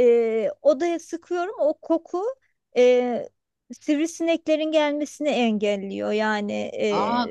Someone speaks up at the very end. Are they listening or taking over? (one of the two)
taking over